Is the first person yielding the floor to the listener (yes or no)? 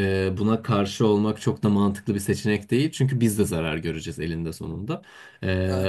no